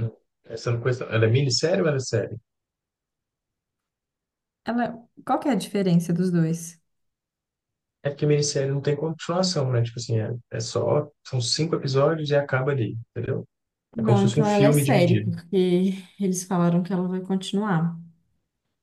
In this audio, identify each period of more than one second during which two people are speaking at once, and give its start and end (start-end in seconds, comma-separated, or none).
14.0-15.3